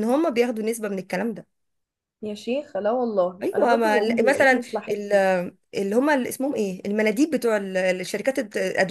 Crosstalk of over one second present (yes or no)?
yes